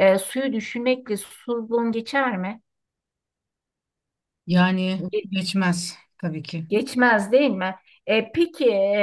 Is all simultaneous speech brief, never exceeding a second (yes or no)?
yes